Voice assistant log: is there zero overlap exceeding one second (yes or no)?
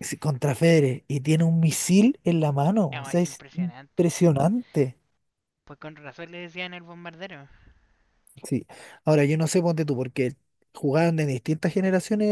no